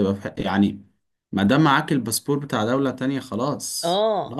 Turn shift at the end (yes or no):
yes